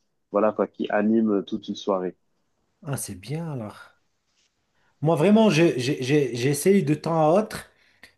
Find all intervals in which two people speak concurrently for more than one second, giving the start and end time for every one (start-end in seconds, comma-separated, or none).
none